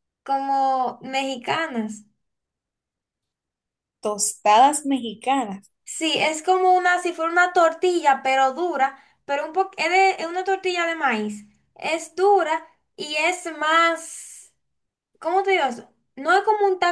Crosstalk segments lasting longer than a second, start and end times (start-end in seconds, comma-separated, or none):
none